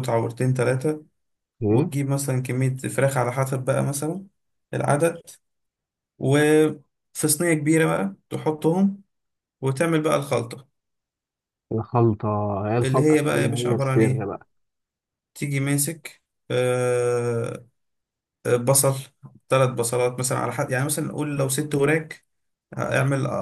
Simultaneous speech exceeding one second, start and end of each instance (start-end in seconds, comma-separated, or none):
12.8-14.3